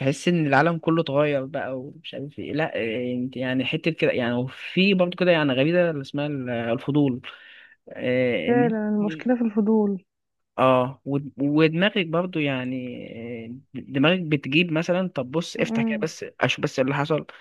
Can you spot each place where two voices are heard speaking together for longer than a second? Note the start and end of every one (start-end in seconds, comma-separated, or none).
none